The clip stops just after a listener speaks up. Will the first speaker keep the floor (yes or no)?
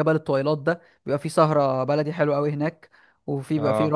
yes